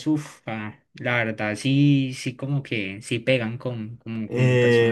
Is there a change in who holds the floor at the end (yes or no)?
yes